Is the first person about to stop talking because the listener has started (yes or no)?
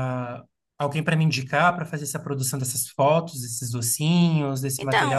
yes